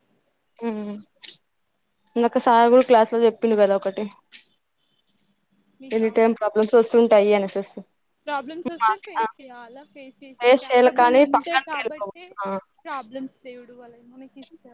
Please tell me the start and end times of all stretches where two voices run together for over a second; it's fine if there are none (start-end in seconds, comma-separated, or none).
10.7-12.2